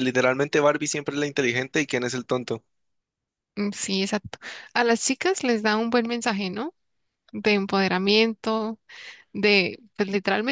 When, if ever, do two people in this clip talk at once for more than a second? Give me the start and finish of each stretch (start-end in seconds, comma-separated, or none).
none